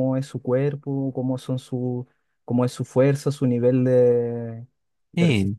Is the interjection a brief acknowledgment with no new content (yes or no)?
yes